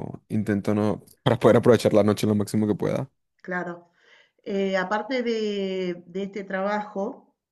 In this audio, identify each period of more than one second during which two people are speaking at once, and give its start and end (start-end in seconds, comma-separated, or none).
none